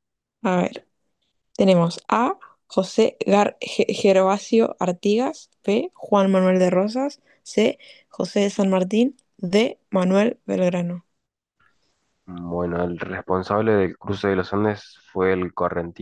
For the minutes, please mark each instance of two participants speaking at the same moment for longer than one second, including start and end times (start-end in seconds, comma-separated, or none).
none